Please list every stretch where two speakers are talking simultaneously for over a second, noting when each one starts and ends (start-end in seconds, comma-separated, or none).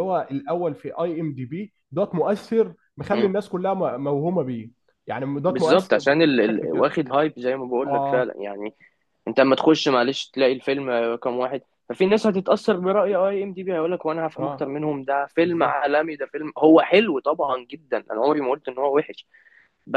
5.5-6.9